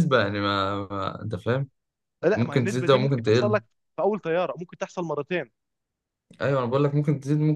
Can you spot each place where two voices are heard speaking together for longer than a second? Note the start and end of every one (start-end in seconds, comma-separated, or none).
2.3-3.6